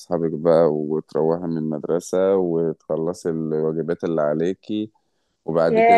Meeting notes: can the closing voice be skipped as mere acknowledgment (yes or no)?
no